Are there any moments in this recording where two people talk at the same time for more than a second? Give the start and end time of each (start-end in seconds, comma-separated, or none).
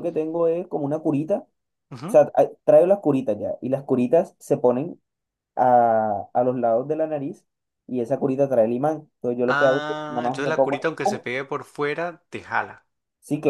9.5-11.2